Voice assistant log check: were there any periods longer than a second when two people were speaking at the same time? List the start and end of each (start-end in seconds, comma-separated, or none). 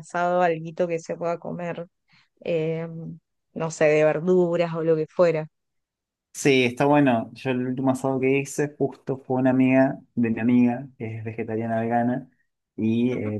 none